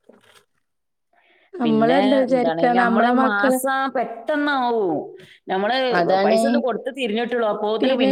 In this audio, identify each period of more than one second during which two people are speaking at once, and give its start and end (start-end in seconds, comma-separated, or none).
1.6-3.6